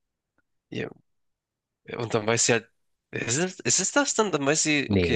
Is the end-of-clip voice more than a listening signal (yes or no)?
yes